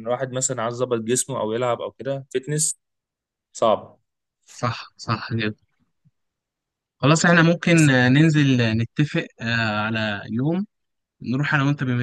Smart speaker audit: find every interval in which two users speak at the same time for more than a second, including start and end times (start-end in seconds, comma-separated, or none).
none